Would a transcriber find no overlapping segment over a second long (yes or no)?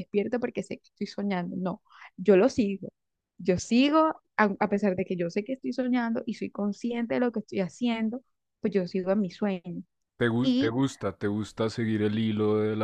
yes